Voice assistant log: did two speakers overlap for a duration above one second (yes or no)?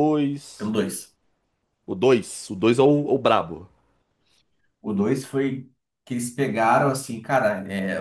no